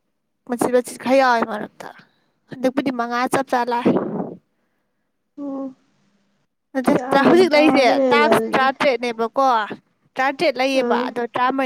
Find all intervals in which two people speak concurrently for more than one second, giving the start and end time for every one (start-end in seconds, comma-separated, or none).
6.9-8.6